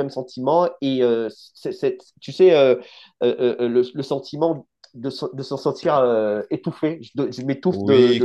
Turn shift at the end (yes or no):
yes